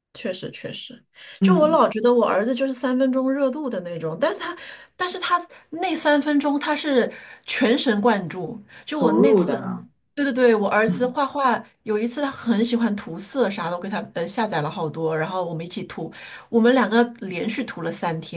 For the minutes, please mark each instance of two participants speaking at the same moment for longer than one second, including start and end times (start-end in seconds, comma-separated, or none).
none